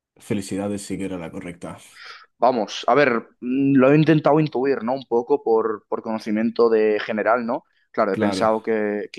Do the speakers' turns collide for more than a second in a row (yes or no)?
no